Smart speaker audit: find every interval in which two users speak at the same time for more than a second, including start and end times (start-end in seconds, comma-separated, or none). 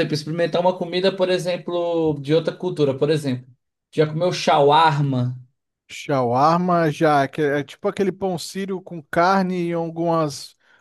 none